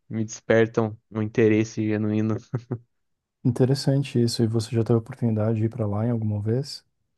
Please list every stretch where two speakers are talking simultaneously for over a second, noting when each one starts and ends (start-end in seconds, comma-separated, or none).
none